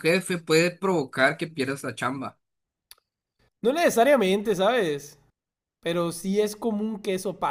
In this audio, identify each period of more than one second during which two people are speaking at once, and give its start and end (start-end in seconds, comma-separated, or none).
none